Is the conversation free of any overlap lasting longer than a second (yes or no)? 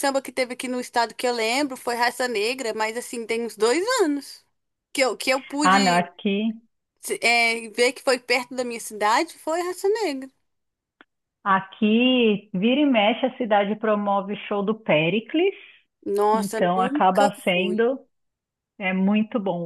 no